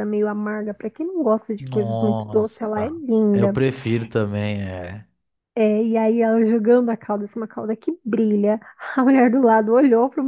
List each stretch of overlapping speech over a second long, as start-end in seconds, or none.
1.6-3.6